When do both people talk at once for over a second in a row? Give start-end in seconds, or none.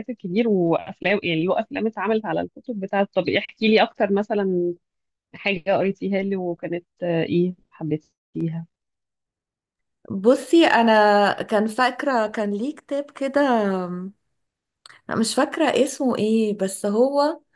none